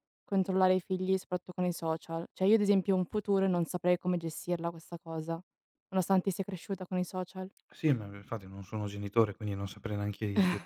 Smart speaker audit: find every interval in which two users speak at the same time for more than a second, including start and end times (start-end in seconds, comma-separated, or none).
none